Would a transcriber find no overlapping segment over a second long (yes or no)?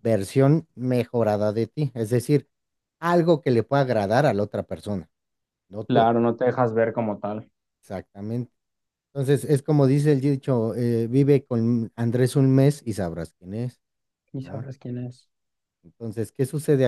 yes